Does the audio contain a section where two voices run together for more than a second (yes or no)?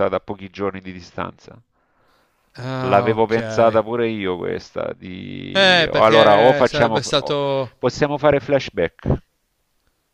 yes